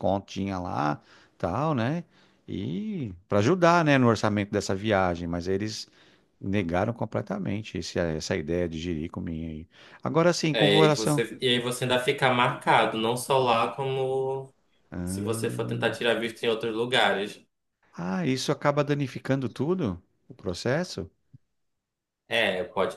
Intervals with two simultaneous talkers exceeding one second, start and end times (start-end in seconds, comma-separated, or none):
none